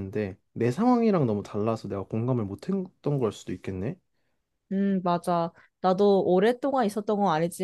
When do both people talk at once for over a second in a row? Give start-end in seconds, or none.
none